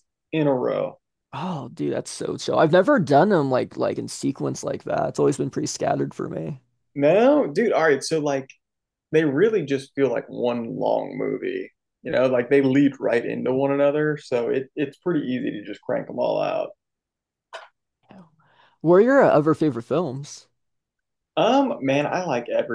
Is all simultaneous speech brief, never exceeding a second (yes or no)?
yes